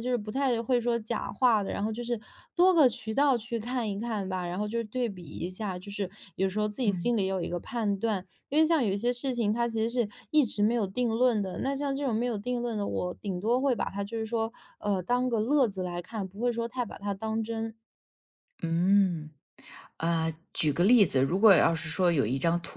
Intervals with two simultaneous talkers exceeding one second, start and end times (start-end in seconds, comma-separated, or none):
none